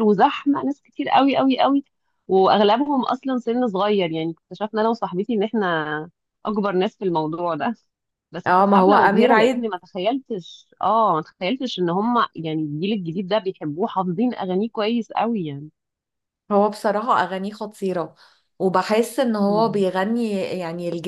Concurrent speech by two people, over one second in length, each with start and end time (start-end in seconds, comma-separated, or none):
8.5-9.7